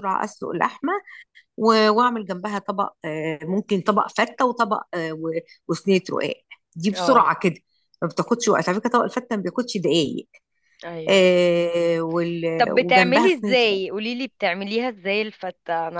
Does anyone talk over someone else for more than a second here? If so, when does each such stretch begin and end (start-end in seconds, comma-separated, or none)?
12.6-13.8